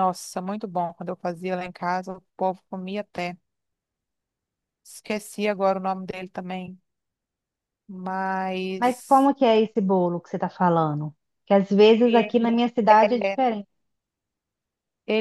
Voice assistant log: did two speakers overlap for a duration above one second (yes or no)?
no